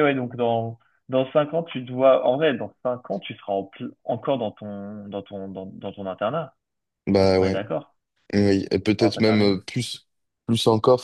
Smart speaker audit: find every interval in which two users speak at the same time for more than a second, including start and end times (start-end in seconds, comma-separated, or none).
none